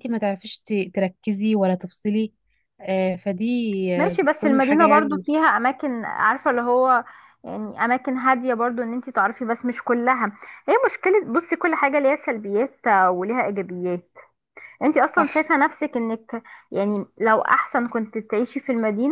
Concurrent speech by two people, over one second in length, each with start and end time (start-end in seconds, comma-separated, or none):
4.0-5.4